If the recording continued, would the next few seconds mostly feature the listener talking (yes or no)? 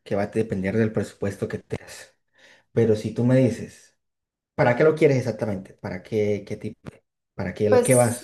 yes